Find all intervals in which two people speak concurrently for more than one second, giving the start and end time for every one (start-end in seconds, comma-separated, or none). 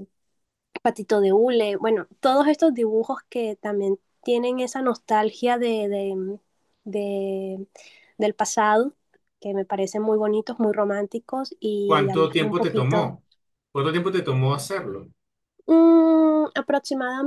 11.9-13.1